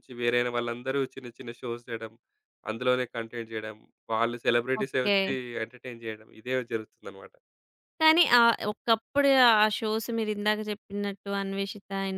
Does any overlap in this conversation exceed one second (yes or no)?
no